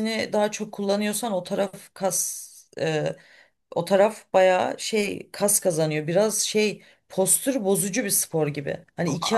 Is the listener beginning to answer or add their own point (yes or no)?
no